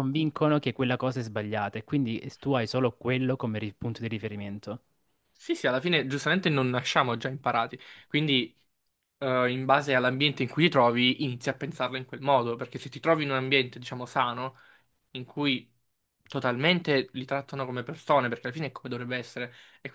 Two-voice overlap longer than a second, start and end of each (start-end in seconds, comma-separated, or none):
none